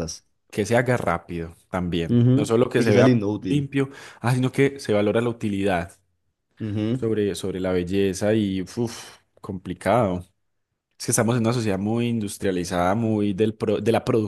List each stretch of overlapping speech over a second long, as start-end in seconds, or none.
2.1-3.7